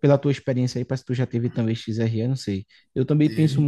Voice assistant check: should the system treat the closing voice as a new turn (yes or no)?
no